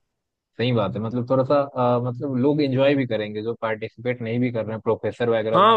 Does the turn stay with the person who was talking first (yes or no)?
no